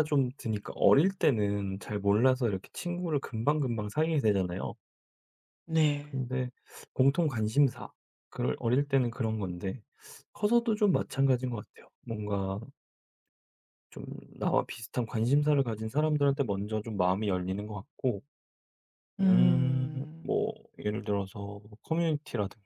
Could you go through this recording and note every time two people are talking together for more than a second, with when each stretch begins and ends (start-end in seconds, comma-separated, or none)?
19.2-20.4